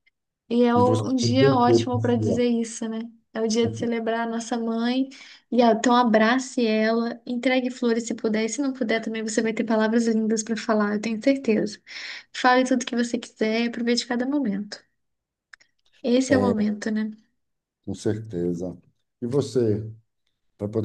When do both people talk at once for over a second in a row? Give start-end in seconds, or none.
0.8-2.4